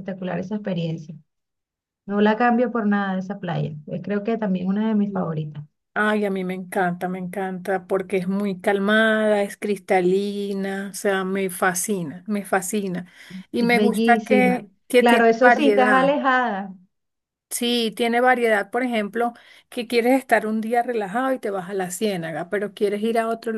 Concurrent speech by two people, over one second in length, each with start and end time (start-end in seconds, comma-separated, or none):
13.6-15.9